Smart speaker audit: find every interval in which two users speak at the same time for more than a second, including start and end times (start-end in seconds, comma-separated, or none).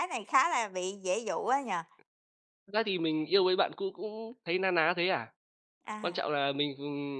none